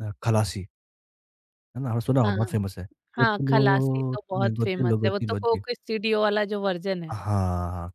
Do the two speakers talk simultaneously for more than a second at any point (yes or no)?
yes